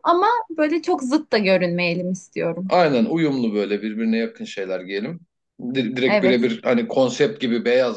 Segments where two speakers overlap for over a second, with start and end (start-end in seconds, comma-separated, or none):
none